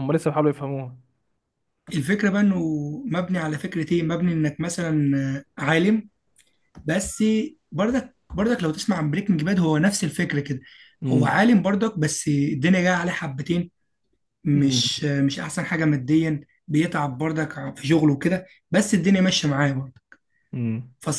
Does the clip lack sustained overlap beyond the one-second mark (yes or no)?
yes